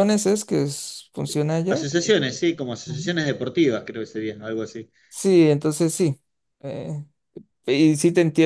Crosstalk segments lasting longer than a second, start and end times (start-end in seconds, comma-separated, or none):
none